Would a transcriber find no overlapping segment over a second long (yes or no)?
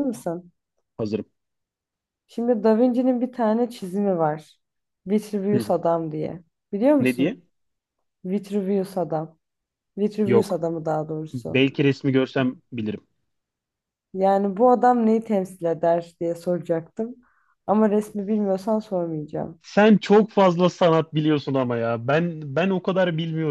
yes